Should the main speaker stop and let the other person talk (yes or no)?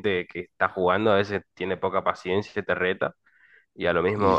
no